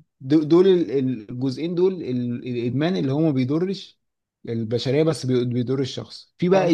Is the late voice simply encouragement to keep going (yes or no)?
yes